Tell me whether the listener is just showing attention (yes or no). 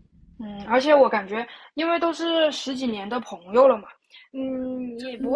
yes